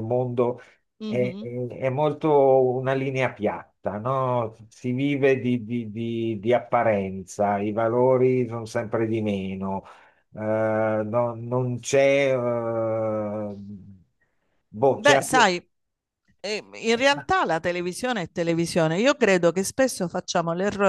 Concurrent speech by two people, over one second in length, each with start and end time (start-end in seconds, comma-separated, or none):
none